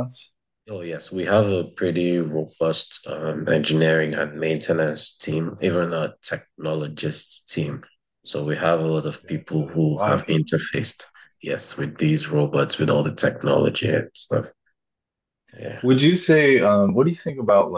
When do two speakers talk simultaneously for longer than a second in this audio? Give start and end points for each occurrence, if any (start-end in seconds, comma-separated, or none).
9.0-11.1